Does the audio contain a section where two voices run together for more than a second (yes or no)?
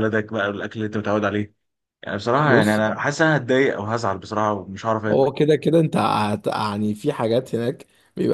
no